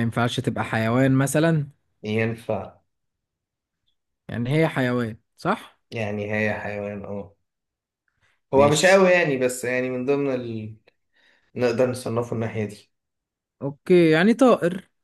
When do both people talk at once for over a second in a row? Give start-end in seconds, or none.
none